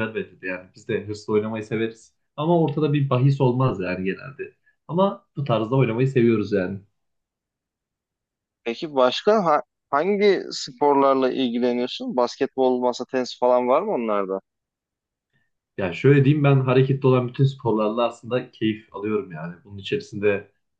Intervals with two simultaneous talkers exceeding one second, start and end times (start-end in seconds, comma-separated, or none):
none